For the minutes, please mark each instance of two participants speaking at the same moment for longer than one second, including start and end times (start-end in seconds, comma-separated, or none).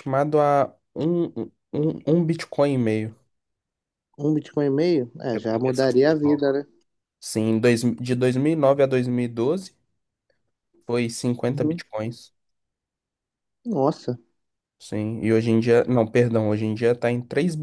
5.3-6.7